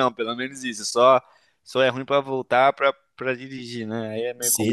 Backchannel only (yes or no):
no